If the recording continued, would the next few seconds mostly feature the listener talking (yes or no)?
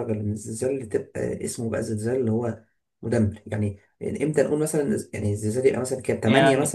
yes